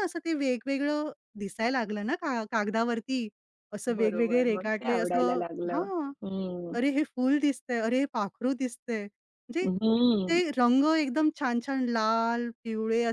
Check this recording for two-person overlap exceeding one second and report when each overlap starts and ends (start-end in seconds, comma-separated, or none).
3.9-5.8